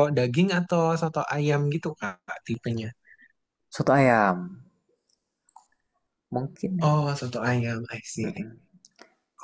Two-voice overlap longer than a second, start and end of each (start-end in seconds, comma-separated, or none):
none